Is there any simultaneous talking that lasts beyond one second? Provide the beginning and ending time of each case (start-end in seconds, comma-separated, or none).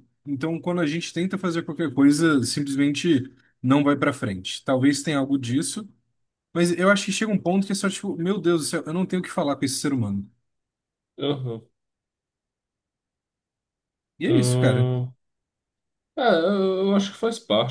none